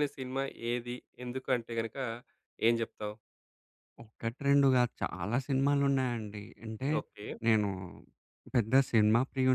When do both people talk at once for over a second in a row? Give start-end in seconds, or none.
none